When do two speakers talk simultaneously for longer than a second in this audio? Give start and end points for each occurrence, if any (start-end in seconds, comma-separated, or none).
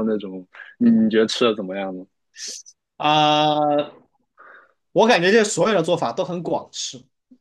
none